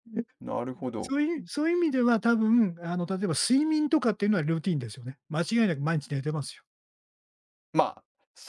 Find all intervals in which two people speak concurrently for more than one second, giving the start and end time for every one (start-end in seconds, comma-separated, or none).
none